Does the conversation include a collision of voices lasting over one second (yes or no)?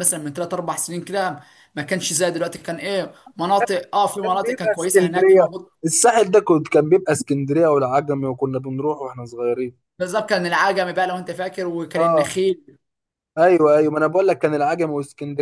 yes